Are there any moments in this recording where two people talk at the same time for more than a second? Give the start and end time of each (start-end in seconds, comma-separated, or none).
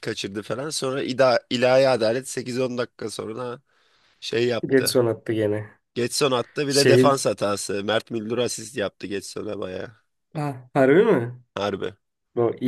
none